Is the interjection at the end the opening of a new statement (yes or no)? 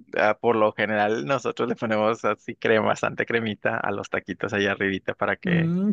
yes